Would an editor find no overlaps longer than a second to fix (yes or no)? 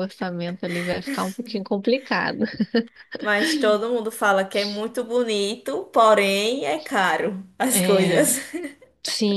yes